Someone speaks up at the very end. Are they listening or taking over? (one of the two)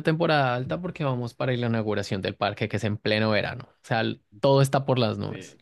listening